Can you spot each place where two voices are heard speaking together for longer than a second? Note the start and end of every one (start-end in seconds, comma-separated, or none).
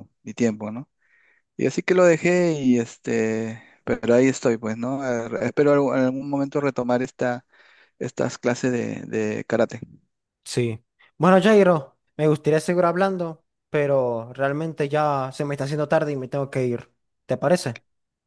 none